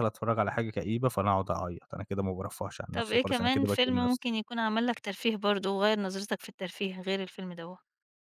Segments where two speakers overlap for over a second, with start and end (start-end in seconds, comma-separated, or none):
3.0-4.3